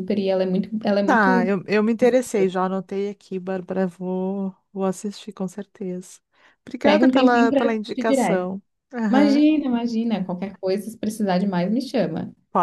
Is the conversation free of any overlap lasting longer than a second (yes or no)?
no